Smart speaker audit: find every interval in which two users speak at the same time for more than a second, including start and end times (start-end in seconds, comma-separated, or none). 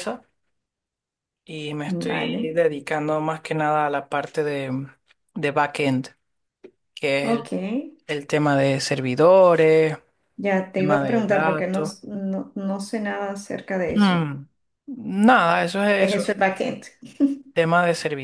10.8-11.9